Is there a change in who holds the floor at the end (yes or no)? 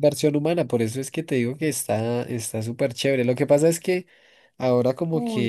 no